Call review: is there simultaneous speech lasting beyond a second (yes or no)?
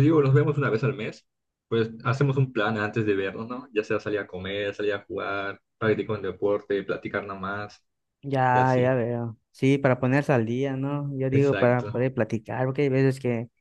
no